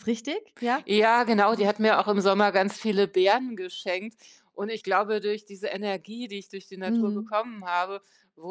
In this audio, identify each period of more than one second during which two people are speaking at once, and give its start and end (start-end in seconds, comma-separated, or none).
none